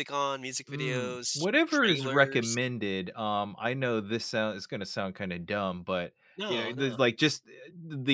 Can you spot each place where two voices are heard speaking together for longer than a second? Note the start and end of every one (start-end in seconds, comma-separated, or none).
0.7-2.6